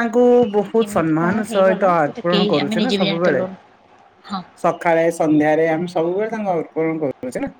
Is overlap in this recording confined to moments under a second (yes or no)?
no